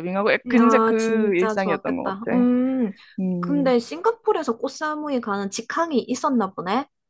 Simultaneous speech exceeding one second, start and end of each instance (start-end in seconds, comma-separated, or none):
0.5-2.4